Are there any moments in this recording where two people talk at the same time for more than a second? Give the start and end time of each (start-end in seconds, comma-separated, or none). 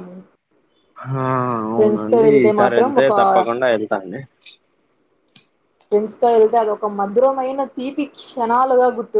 none